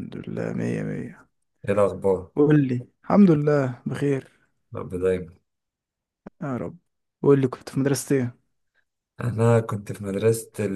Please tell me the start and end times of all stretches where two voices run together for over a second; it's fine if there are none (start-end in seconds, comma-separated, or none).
none